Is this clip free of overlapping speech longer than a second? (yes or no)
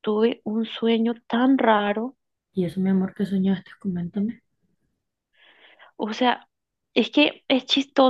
yes